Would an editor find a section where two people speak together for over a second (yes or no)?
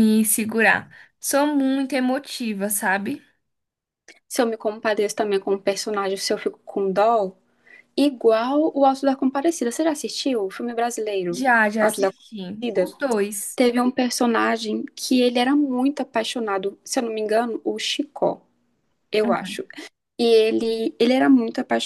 yes